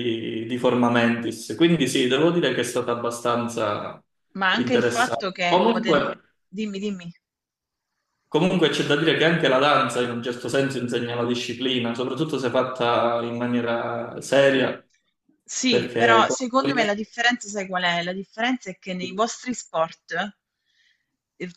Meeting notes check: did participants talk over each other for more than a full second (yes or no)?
yes